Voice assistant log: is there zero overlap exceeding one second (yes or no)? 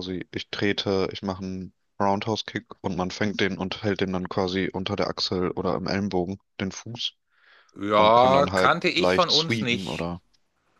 no